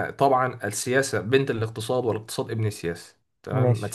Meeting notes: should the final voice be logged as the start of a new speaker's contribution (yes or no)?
no